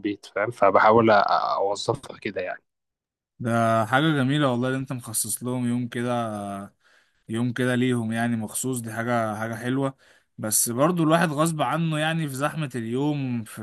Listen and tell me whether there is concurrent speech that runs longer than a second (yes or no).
no